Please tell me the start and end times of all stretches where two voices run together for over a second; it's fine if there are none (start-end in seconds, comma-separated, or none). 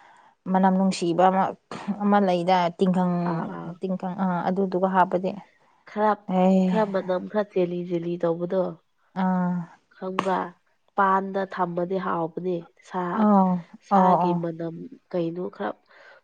none